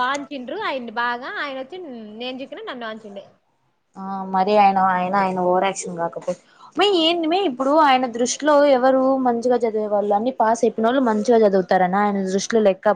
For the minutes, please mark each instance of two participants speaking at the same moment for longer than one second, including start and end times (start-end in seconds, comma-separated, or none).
none